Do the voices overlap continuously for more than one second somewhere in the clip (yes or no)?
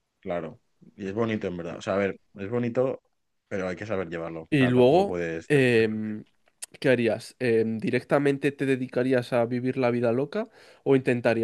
yes